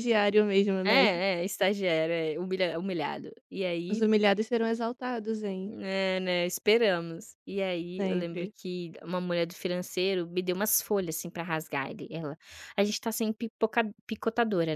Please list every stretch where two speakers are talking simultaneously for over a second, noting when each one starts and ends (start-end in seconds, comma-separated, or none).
none